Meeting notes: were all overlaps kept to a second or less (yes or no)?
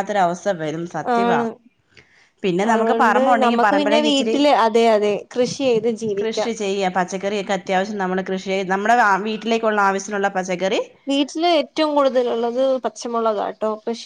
no